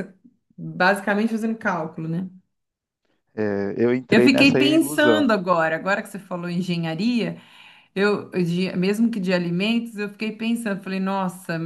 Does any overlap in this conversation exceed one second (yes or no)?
yes